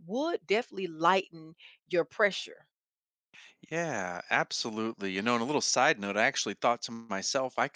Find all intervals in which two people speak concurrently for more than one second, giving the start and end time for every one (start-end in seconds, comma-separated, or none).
none